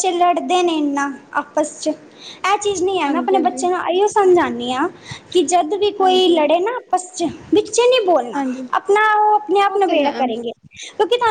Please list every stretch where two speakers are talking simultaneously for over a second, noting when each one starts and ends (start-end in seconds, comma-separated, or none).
none